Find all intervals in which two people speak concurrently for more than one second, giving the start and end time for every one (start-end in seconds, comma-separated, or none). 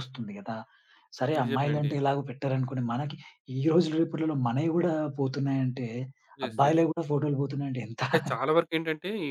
none